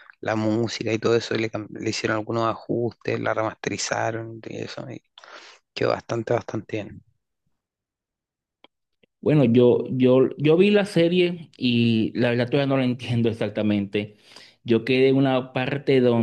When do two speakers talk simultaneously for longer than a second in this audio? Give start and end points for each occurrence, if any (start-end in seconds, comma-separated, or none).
none